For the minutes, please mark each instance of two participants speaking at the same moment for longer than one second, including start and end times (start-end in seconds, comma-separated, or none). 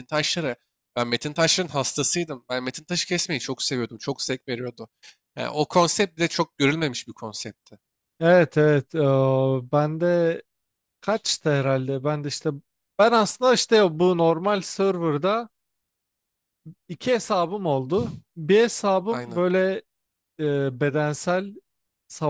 none